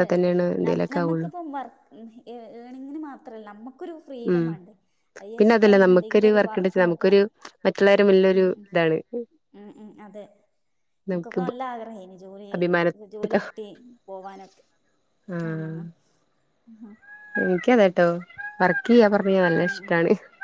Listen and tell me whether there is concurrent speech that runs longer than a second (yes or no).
yes